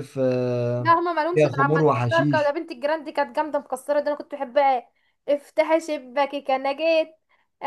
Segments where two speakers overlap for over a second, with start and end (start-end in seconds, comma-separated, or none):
0.8-2.6